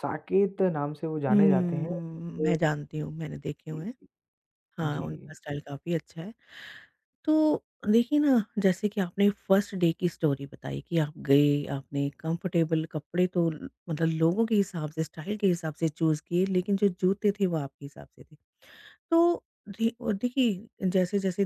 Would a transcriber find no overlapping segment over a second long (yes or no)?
no